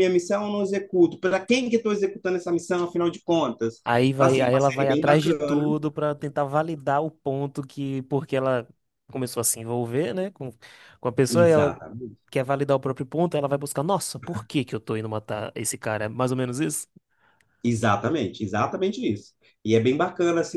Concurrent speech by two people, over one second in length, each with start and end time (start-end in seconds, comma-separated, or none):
4.1-5.6